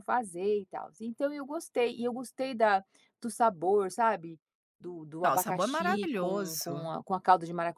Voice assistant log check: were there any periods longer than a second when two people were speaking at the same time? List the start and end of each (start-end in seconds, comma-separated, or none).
5.2-6.9